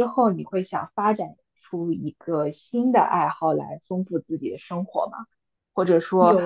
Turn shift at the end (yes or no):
no